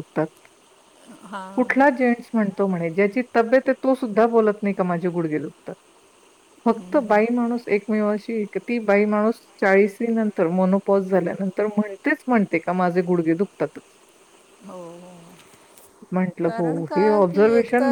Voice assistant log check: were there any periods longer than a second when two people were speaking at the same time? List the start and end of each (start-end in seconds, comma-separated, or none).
none